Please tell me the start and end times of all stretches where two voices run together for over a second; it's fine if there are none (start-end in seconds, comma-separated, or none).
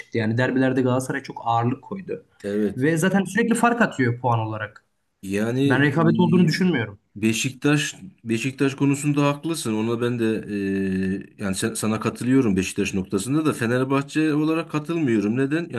none